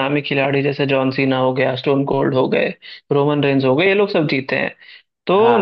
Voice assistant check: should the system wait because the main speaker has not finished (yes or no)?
yes